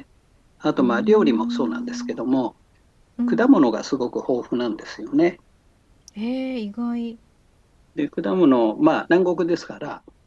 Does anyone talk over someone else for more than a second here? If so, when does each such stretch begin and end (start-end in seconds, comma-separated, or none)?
0.8-2.2